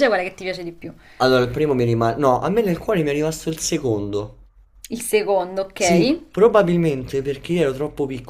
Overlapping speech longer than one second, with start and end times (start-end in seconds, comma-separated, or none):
none